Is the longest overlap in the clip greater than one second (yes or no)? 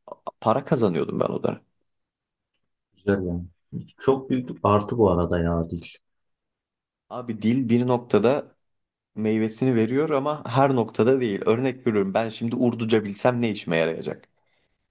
no